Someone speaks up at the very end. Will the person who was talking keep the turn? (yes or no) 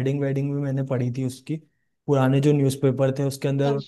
yes